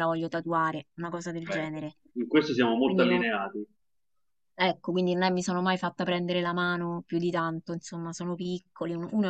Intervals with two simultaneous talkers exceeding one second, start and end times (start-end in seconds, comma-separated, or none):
none